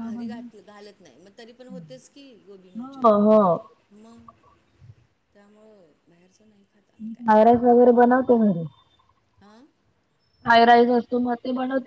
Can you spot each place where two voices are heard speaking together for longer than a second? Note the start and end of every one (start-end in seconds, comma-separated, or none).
none